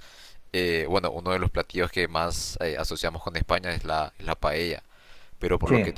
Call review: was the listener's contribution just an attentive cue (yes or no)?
yes